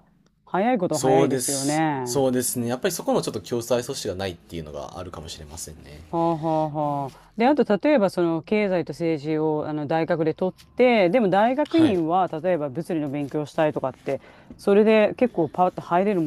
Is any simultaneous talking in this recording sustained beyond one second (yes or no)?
yes